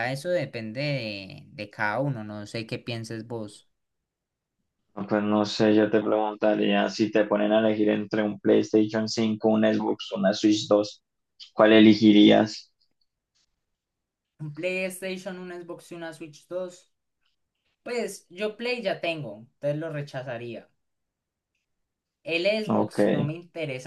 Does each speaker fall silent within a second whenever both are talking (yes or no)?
yes